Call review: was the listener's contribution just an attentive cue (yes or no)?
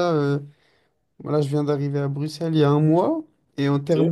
yes